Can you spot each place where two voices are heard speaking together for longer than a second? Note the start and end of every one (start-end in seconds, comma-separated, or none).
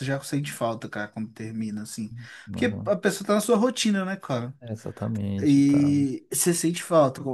none